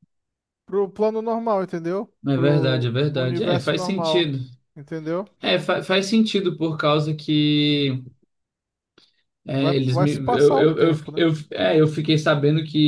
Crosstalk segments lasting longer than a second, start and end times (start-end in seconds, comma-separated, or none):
2.3-4.3, 9.5-11.3